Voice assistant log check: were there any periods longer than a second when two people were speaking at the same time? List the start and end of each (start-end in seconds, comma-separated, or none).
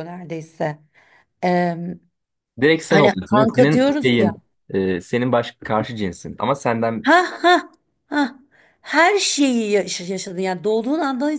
2.9-4.4